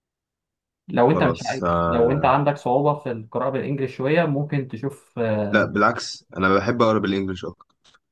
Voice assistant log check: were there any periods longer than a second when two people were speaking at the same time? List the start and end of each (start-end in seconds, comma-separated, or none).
1.1-2.3